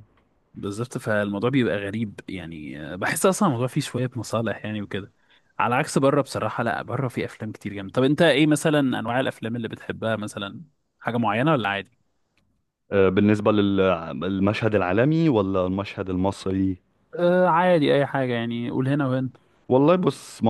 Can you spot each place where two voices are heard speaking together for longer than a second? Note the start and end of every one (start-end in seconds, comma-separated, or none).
none